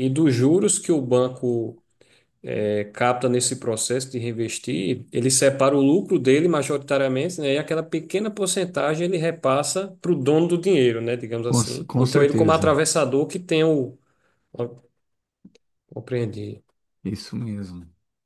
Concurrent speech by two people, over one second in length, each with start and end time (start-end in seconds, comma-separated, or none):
11.5-12.7